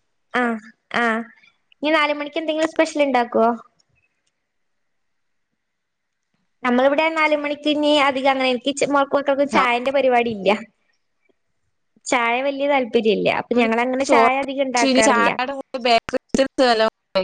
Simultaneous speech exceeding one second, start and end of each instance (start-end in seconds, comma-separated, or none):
none